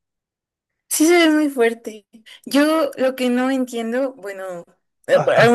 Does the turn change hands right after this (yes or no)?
no